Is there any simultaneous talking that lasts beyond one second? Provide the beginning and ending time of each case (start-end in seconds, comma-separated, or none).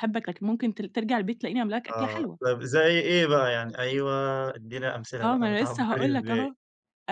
5.2-6.5